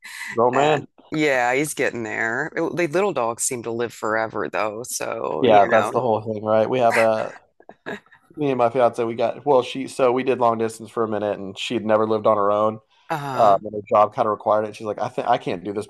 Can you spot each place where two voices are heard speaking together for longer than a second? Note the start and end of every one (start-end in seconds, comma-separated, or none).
none